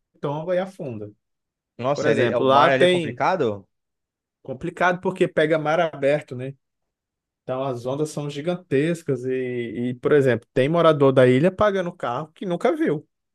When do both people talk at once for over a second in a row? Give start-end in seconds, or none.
1.9-3.2